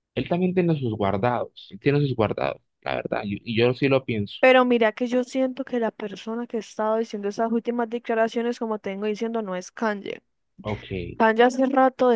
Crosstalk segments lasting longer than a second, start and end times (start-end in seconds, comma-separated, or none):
none